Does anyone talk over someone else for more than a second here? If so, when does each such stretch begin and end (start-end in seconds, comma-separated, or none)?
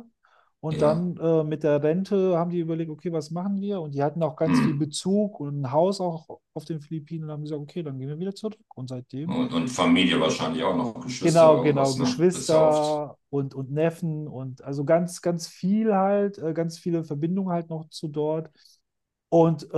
11.2-13.1